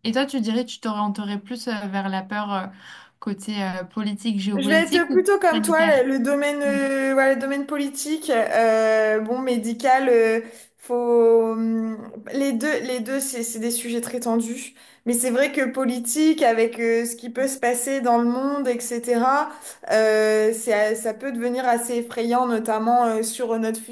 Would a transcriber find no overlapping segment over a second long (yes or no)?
no